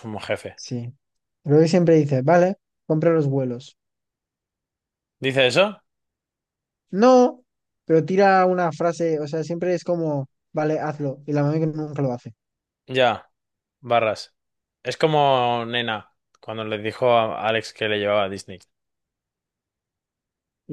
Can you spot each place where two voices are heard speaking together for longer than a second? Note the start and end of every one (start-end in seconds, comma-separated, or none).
none